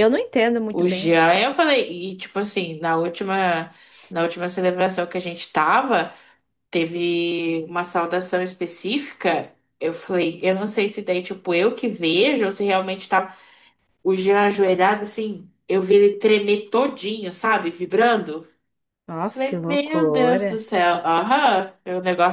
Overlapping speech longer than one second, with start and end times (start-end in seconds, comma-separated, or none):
19.3-20.6